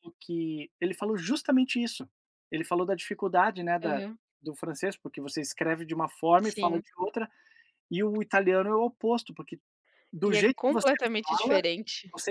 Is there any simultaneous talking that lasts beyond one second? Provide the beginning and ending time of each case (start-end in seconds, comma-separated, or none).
10.2-11.6